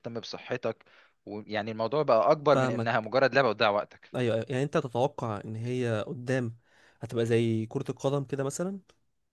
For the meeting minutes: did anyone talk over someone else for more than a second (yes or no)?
no